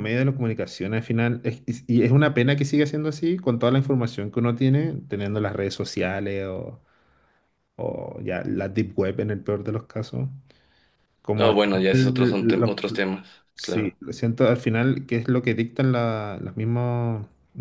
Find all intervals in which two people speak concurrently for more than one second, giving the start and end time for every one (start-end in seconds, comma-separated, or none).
11.3-12.7